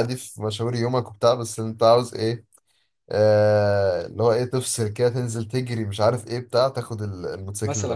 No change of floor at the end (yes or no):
no